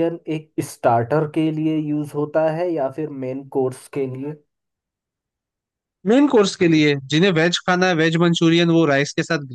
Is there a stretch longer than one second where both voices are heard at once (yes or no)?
no